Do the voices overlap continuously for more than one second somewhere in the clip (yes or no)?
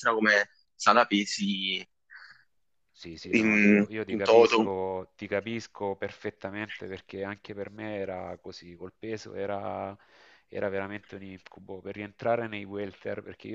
yes